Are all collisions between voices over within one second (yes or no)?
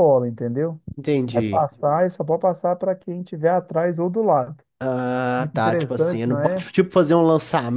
no